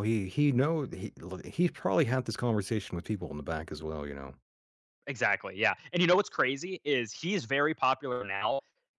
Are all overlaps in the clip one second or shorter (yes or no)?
yes